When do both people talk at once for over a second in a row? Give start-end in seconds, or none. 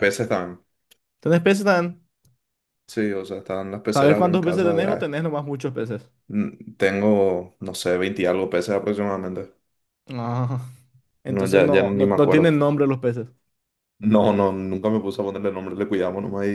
3.9-5.2, 11.3-12.5